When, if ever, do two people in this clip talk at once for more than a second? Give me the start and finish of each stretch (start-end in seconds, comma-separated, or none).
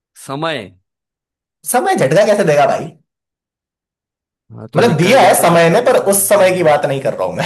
4.8-6.8